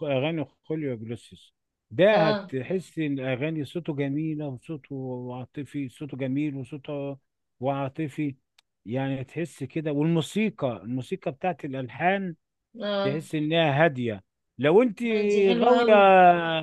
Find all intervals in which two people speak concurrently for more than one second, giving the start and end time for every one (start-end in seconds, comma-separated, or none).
none